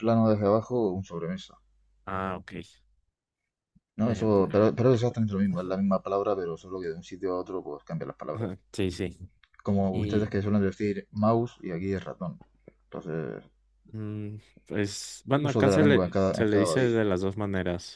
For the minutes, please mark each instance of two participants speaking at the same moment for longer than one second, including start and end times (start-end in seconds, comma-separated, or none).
15.4-17.0